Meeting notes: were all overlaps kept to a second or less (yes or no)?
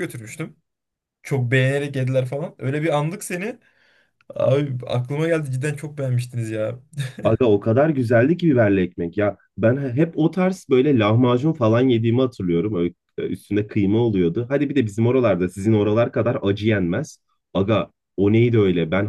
yes